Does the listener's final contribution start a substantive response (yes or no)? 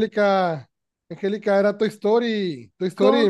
no